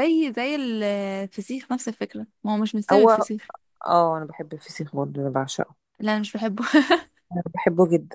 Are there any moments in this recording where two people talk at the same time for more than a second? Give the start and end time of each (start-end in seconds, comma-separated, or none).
none